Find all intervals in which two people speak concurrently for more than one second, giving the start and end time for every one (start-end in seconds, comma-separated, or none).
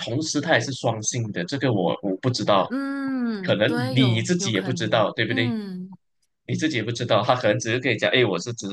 3.4-5.5